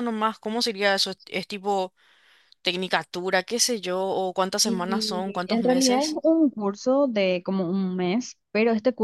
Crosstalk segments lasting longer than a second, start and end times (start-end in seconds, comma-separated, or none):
4.6-6.2